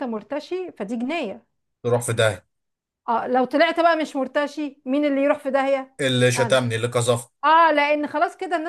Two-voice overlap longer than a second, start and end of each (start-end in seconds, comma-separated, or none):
none